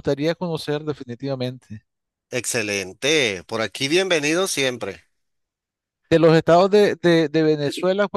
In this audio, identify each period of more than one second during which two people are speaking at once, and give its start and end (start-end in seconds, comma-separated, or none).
none